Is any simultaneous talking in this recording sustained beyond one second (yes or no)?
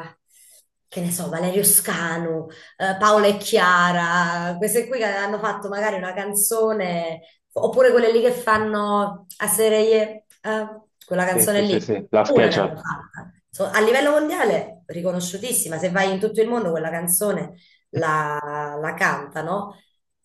yes